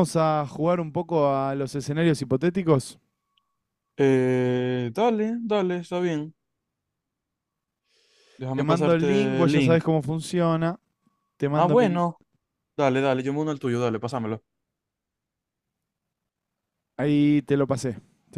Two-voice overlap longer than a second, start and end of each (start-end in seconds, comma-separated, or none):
8.5-9.8